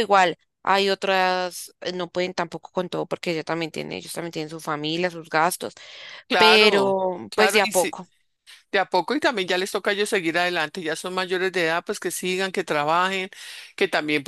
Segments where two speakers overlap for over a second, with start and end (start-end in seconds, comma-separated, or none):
6.4-8.0